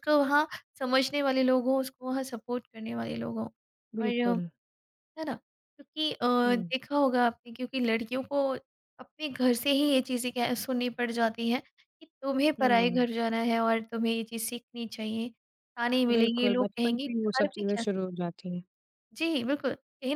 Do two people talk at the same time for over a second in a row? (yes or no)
yes